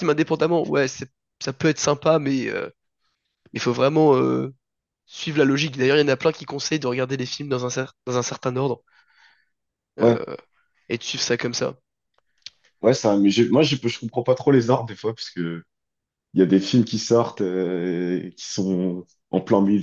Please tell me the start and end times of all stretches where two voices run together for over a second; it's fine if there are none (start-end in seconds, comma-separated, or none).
none